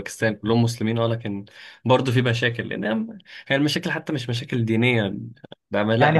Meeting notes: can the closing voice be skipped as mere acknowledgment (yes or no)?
no